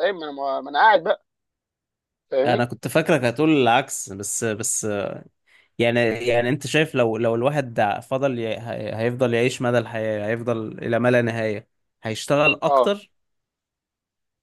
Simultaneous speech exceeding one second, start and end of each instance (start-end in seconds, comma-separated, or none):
none